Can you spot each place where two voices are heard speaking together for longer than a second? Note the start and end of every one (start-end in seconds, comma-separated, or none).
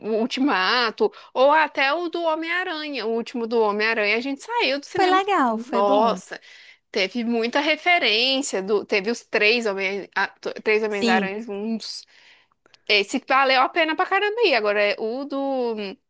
5.0-6.2